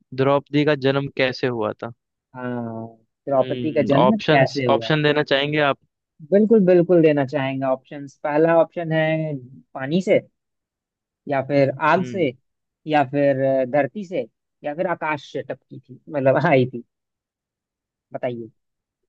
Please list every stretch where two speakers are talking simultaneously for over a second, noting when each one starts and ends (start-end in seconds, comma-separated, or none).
3.4-5.1